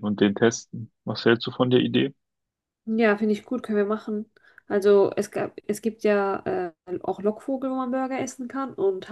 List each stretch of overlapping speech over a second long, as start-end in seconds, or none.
none